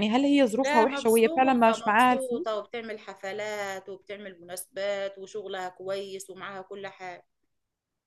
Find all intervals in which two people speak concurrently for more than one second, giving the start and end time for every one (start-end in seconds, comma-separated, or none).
0.6-2.5